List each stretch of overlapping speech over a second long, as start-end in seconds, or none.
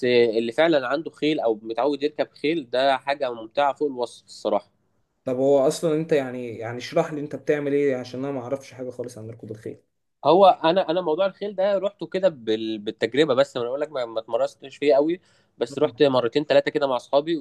none